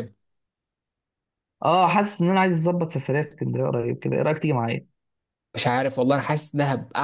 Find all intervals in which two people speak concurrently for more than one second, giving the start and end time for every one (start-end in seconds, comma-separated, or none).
none